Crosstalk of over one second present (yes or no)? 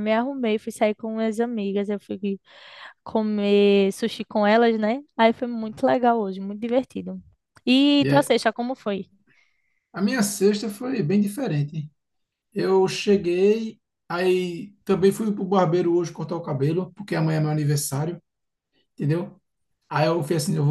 no